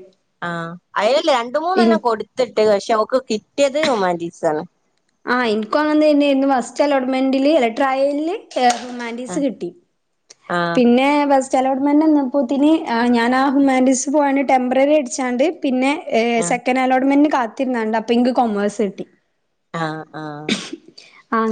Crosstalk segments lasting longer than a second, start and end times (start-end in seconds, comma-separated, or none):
none